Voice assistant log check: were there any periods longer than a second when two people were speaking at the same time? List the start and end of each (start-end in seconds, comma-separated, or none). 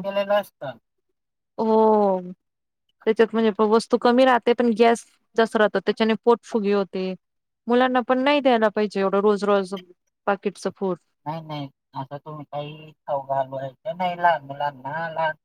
none